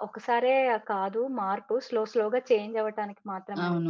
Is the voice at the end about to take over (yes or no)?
yes